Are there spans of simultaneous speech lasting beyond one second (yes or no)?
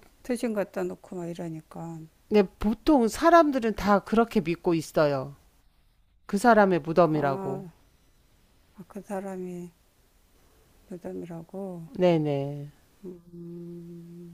no